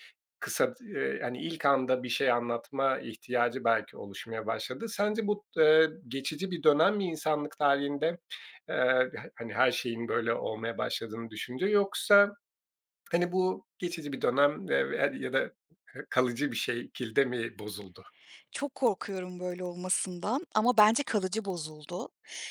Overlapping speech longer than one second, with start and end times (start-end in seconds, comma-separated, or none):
none